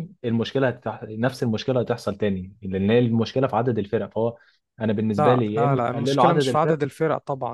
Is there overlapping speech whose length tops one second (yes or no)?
yes